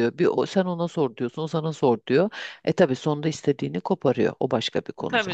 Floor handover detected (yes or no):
yes